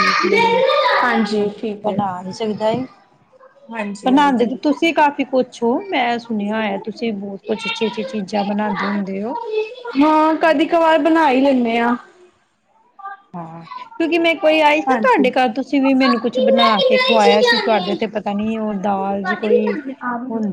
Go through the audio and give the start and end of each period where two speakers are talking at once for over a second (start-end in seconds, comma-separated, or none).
none